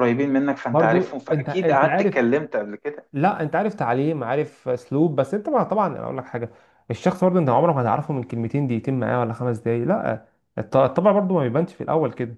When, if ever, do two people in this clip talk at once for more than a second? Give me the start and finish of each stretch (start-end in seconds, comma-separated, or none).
0.7-2.3